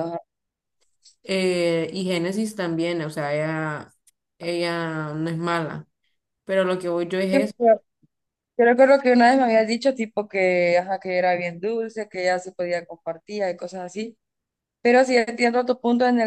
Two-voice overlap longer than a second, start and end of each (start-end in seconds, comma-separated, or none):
none